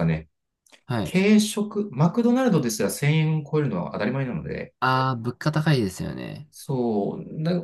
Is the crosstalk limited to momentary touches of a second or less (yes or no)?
yes